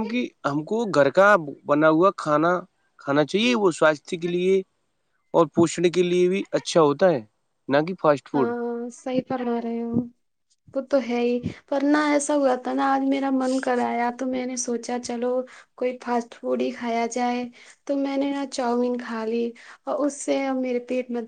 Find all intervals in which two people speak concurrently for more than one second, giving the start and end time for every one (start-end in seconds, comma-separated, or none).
none